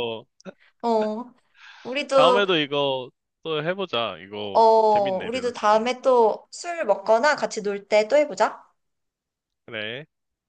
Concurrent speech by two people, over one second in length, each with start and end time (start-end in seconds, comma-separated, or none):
4.5-5.9